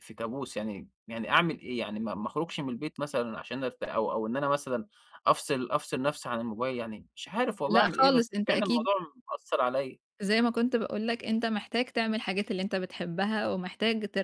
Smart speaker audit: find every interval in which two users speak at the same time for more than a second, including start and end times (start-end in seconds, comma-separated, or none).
7.7-8.9